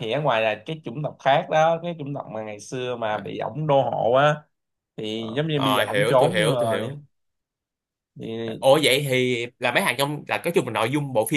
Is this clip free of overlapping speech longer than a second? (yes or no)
no